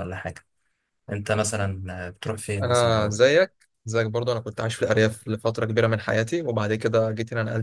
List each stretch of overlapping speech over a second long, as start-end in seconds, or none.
none